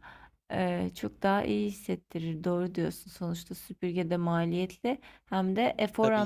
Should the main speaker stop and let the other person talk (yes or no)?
no